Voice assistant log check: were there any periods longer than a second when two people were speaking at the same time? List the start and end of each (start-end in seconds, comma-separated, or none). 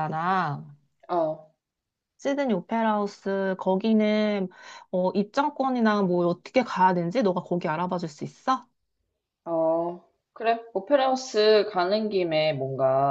none